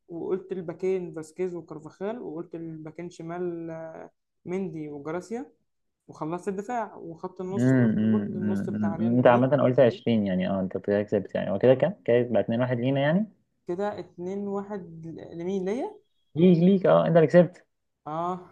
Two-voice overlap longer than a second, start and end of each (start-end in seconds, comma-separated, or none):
7.5-9.5